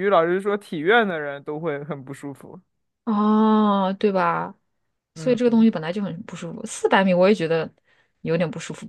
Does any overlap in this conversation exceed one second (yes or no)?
no